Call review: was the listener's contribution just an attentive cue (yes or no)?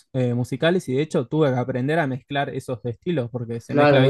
no